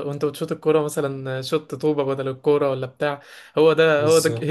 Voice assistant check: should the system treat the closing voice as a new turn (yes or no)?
no